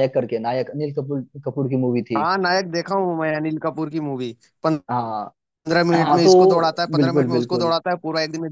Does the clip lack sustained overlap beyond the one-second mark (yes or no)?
no